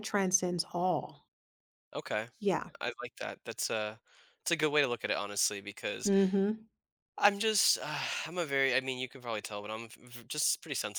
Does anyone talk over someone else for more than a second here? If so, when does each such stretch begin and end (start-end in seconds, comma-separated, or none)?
none